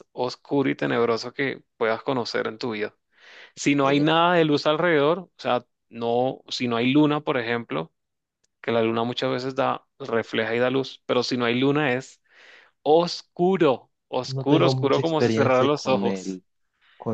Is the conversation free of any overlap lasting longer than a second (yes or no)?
no